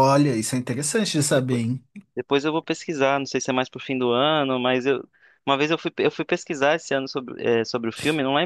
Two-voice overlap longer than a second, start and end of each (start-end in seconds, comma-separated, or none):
none